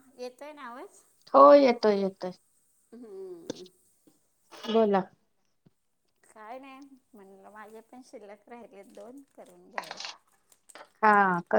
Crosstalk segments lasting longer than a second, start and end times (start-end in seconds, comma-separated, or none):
none